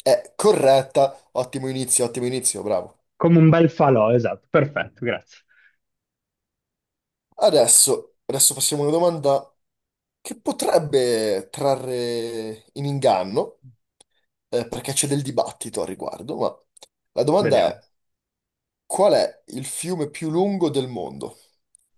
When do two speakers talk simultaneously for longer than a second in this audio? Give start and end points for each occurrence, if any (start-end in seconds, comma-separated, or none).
none